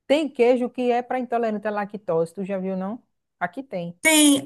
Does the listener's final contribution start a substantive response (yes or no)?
yes